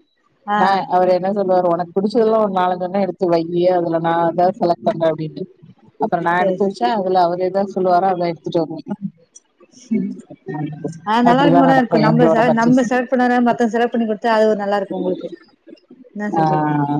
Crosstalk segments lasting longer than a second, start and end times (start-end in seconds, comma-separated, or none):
11.3-12.8